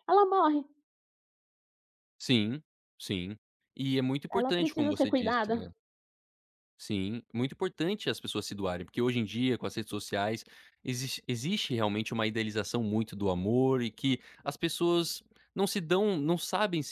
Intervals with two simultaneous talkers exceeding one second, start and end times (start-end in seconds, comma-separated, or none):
4.3-5.7